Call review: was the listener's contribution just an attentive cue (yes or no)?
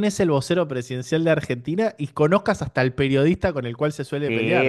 no